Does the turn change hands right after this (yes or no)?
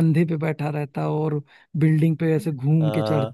yes